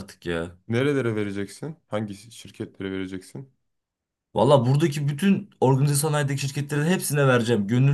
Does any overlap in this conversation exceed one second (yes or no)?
no